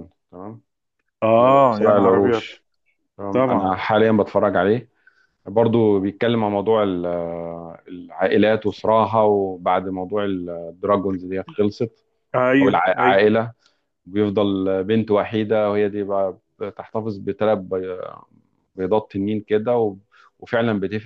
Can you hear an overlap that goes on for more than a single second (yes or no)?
yes